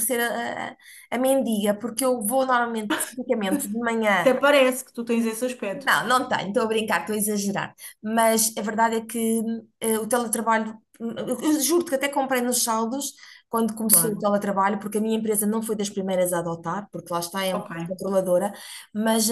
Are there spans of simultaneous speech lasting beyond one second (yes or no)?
no